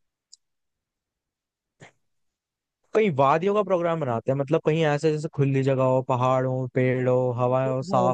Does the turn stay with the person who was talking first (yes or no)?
no